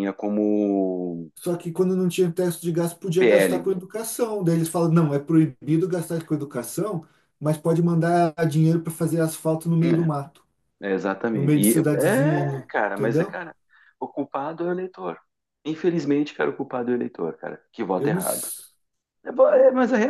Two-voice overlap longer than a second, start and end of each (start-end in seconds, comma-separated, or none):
11.3-13.4